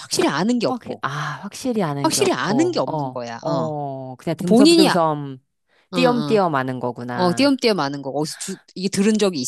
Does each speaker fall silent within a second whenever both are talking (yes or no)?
no